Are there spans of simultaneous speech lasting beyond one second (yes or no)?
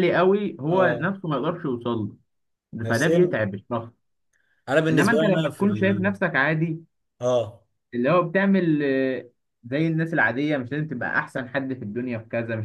yes